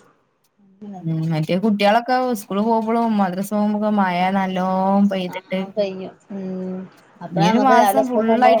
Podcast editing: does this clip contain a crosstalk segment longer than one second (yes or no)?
no